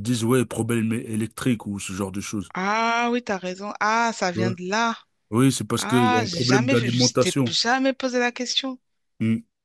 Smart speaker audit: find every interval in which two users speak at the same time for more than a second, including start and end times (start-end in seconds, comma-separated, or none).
5.8-7.5